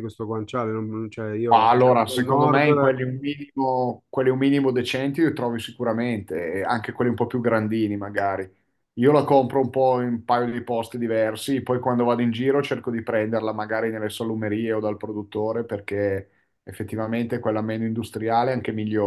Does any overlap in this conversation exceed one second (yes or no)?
yes